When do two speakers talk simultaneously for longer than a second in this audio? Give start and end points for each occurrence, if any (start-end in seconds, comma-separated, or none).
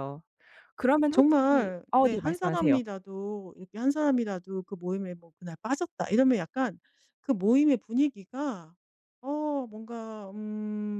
1.1-2.8